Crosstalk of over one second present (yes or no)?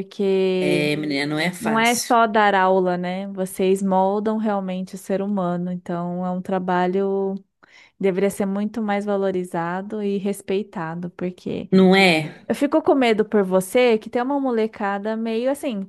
no